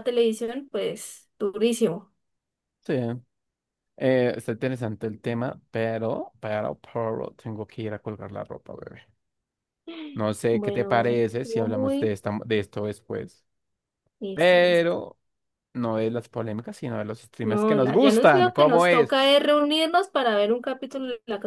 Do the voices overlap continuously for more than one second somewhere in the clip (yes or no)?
yes